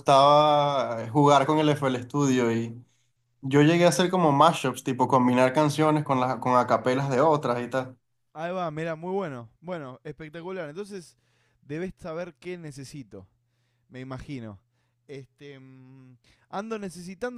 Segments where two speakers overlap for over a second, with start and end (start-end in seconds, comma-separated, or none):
none